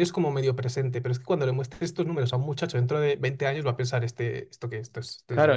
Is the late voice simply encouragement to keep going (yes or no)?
no